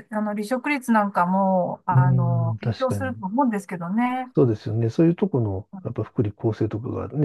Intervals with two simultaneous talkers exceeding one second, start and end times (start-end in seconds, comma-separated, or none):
1.9-3.2